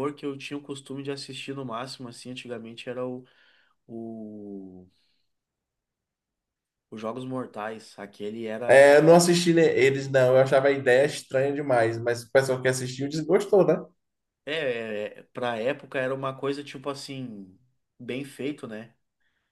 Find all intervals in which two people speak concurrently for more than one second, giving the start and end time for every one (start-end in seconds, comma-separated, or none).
none